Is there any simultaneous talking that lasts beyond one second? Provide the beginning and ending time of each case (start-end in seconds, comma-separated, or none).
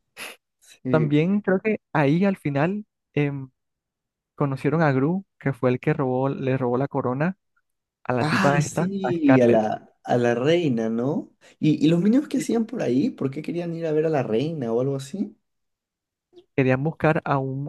8.2-9.7